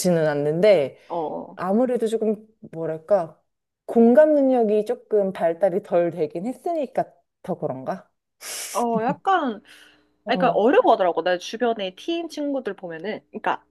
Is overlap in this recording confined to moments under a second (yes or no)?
yes